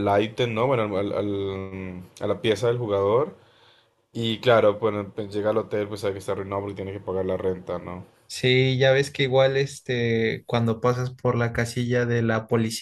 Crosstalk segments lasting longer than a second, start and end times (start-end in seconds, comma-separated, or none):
none